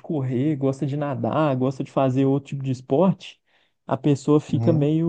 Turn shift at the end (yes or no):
no